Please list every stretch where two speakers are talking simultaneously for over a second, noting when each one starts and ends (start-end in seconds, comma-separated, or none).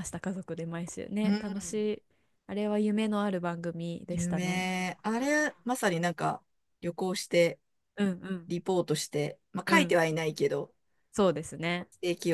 none